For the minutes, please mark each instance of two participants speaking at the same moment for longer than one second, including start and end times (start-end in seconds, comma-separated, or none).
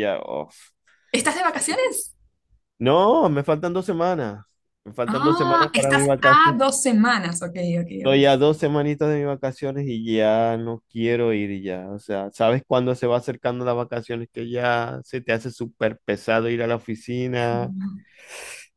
5.1-6.6